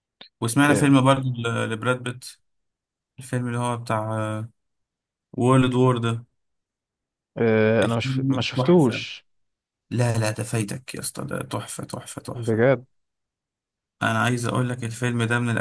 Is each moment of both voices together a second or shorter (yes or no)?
no